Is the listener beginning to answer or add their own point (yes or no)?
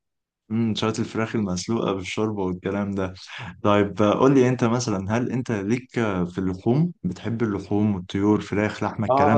yes